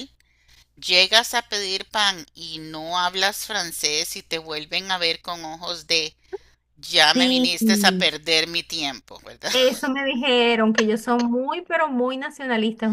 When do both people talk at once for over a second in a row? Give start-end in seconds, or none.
none